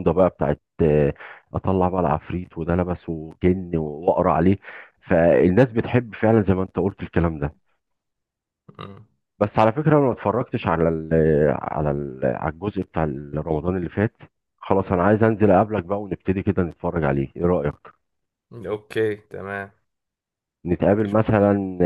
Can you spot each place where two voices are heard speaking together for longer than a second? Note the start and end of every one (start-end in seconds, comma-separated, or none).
none